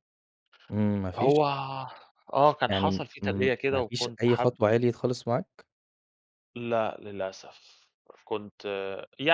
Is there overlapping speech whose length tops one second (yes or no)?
yes